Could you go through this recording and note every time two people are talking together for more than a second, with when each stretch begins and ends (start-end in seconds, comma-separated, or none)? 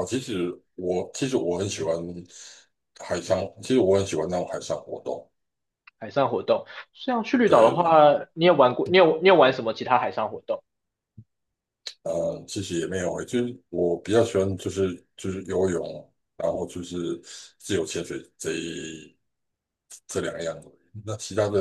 none